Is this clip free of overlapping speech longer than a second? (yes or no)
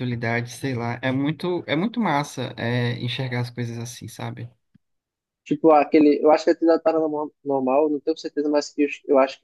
yes